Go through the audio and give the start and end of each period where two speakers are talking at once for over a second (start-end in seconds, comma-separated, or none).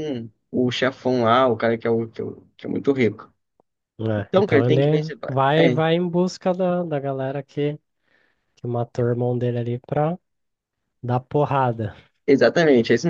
4.2-5.8